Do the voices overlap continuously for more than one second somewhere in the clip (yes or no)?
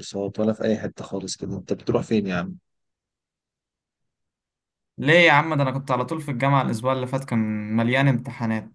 no